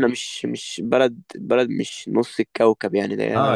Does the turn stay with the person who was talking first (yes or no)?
no